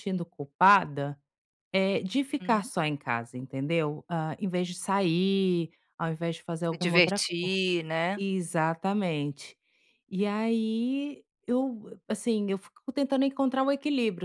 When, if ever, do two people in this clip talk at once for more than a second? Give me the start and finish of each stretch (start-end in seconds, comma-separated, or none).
none